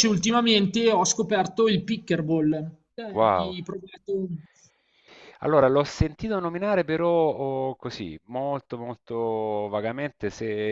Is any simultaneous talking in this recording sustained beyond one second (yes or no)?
no